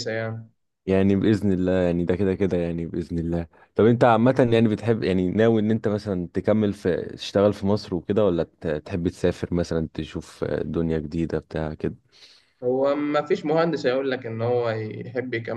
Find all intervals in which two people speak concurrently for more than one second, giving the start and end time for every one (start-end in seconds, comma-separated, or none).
none